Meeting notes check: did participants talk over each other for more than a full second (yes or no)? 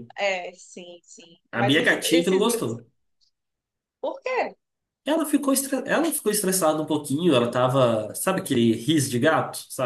yes